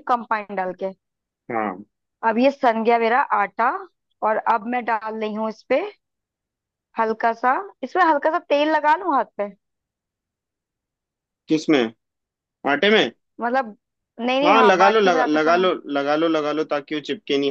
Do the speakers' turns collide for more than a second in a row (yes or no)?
yes